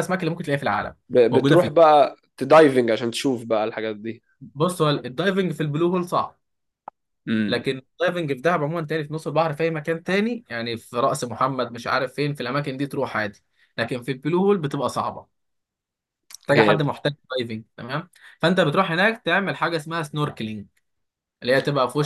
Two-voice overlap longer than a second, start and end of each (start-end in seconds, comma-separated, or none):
none